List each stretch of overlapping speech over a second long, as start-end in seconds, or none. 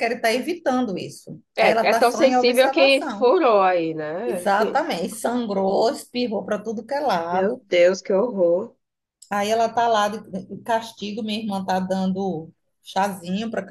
1.6-3.3